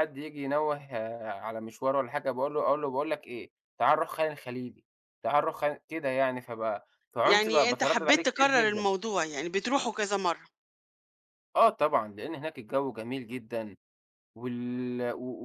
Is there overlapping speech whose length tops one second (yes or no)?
yes